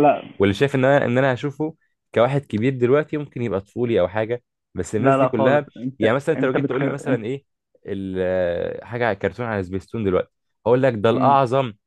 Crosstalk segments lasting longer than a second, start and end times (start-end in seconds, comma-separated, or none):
5.0-7.2